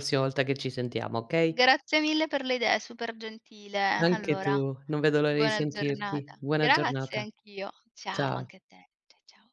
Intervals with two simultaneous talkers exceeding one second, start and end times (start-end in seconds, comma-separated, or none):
5.2-7.2